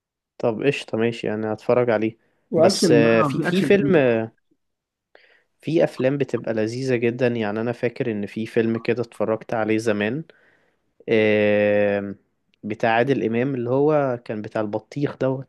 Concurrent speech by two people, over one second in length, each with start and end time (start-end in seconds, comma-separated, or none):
2.6-4.0